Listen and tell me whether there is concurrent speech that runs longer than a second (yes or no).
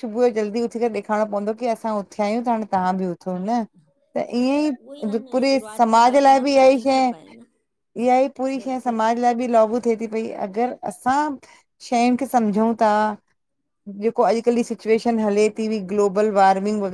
yes